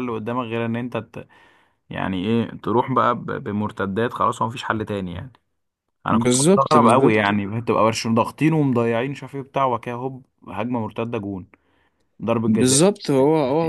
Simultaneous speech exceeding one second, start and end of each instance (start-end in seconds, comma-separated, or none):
6.1-7.3